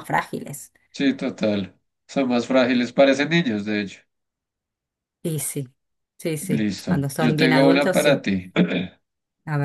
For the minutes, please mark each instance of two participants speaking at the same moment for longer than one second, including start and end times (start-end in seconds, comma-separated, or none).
6.5-8.2